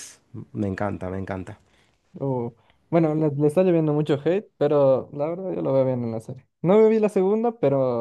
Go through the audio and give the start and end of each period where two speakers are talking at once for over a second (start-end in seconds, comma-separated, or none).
none